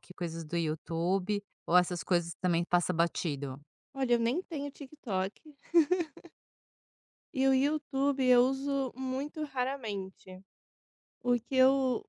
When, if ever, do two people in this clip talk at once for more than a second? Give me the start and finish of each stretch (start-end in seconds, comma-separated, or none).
none